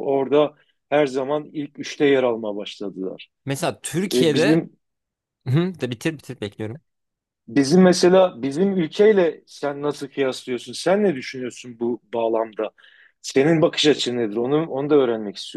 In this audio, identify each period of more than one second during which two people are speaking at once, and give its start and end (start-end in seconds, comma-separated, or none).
none